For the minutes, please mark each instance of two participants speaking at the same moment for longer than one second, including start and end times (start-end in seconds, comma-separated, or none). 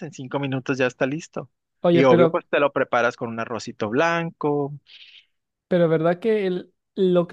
none